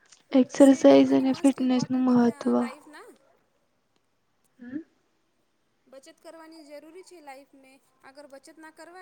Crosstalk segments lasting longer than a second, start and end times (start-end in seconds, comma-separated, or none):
0.6-2.5